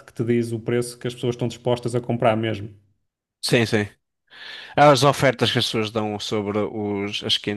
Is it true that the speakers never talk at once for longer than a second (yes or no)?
yes